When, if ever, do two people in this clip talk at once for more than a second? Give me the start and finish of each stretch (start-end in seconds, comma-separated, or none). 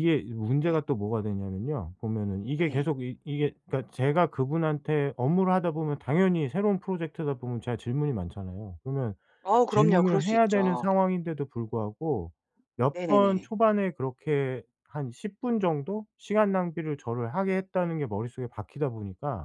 9.7-10.9